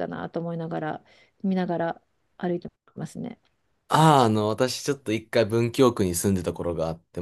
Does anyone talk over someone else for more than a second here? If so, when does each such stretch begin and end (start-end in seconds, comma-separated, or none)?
none